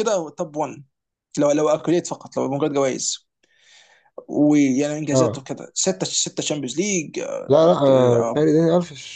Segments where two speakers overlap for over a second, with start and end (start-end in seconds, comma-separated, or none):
none